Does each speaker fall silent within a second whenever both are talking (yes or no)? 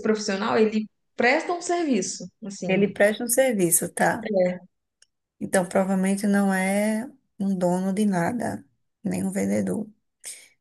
yes